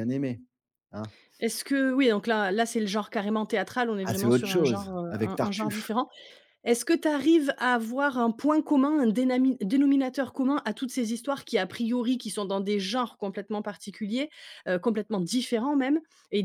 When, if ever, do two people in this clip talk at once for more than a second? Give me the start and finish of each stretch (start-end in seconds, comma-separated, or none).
4.0-5.9